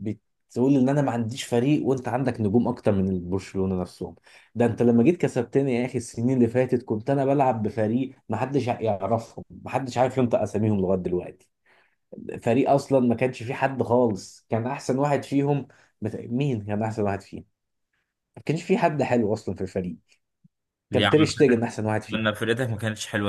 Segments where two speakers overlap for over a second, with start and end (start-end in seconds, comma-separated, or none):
20.9-22.4